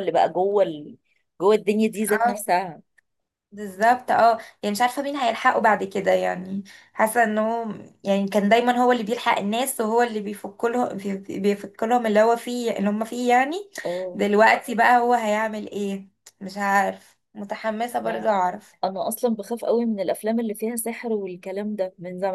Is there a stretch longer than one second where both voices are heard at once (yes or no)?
no